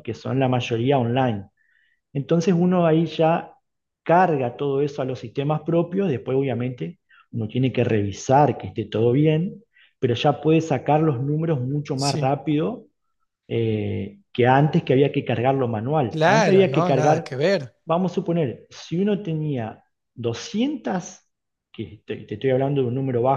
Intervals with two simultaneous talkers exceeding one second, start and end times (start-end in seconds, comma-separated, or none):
16.1-17.3